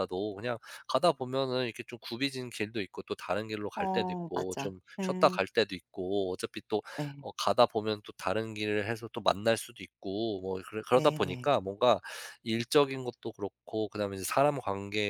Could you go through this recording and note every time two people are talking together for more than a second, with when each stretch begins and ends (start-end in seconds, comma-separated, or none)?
3.8-5.4